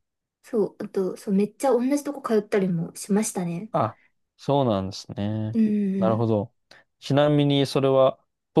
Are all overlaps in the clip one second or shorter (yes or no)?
yes